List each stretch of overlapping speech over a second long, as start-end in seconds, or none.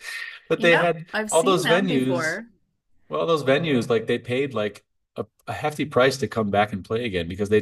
0.5-2.4